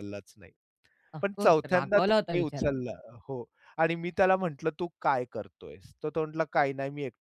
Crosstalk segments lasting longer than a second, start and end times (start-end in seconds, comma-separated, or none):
1.2-2.9